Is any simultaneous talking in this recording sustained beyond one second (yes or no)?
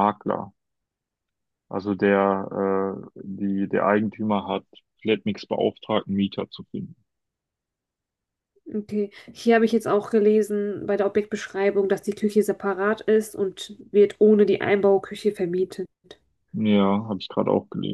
no